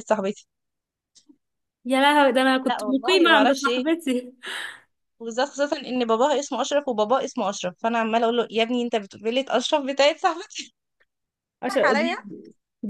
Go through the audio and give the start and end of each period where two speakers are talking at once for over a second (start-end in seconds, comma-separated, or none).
2.6-3.8